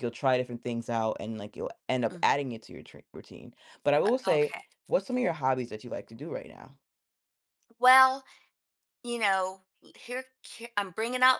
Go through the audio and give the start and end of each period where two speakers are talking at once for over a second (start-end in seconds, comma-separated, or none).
none